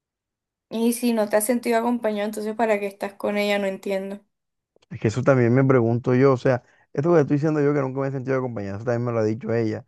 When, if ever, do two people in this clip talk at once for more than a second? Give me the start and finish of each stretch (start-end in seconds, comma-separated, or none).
none